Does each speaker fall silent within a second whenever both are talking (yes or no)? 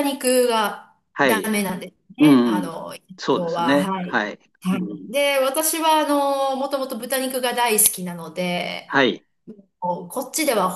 no